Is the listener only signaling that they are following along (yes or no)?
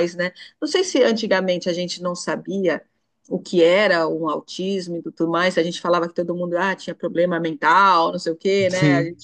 yes